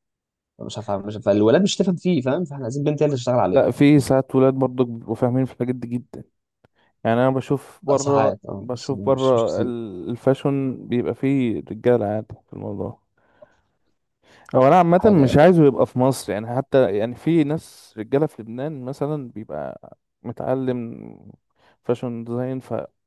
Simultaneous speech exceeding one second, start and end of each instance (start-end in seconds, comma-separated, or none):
7.9-9.7